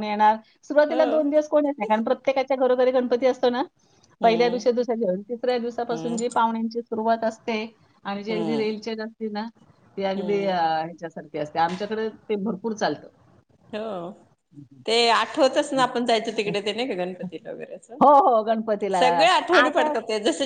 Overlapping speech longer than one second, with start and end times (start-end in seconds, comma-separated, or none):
none